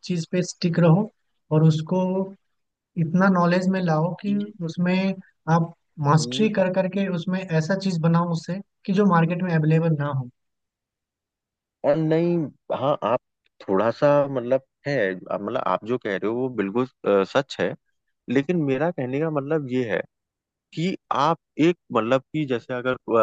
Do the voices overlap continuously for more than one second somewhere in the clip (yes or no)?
no